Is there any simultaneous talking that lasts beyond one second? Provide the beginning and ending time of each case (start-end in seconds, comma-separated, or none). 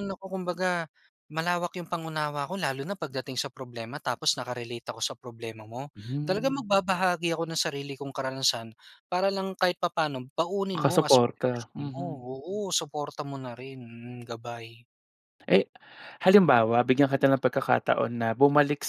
10.7-12.2